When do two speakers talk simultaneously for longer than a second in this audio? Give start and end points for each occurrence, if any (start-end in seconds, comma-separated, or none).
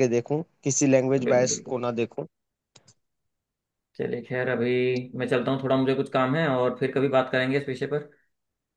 none